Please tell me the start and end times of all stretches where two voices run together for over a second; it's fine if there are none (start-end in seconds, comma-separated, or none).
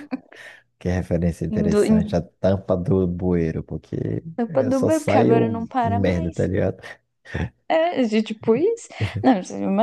4.3-6.4